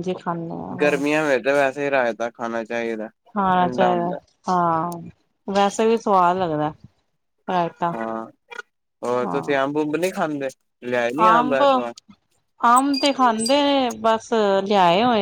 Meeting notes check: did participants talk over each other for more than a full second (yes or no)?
no